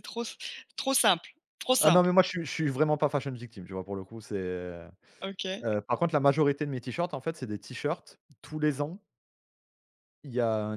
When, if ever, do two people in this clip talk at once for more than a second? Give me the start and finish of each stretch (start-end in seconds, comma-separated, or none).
none